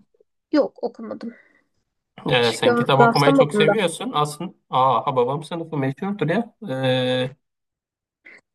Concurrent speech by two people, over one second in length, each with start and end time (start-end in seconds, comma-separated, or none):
2.3-3.7